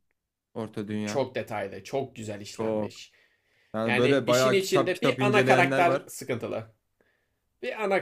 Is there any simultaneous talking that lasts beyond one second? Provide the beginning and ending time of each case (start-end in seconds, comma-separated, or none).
3.9-6.1